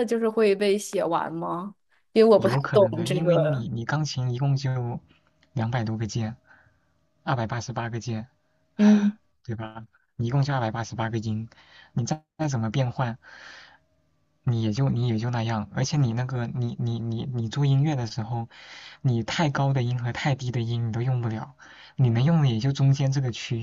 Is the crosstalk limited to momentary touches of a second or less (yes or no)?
no